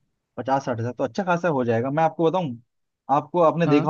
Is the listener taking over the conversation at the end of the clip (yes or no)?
no